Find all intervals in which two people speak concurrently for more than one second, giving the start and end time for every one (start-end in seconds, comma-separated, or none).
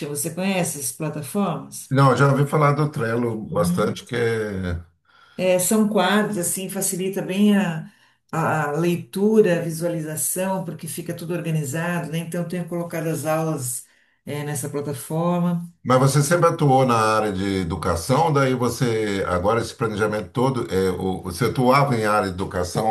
none